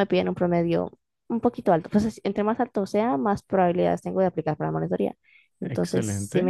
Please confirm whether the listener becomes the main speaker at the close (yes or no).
no